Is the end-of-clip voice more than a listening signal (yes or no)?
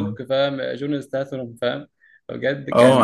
yes